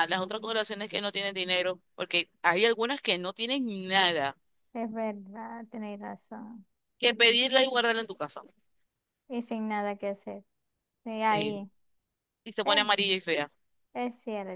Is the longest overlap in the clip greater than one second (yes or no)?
no